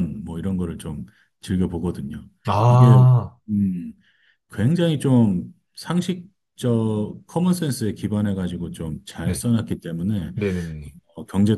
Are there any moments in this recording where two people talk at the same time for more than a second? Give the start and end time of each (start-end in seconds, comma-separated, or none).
none